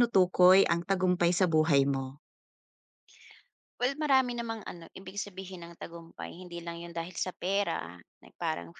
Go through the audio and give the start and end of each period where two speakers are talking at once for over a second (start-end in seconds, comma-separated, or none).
none